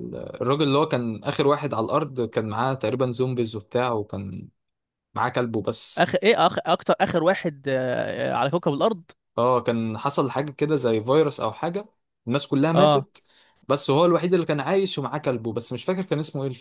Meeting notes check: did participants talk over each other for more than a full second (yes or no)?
no